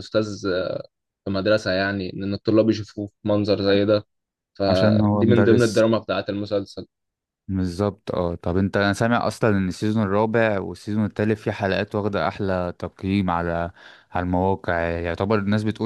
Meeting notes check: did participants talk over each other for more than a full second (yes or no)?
yes